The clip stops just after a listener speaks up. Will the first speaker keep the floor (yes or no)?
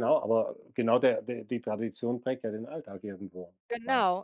no